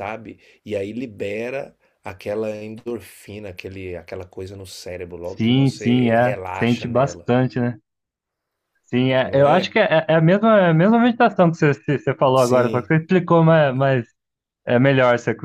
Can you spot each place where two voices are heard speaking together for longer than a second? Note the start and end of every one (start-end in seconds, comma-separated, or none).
5.2-7.3